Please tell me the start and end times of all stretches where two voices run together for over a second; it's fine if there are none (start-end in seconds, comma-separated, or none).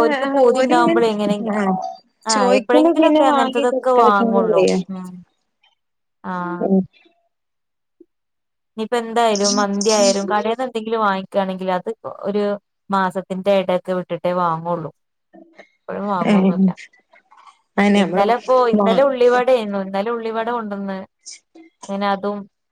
2.3-4.6